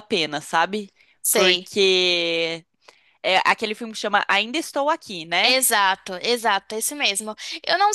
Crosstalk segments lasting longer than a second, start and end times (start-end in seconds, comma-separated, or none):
none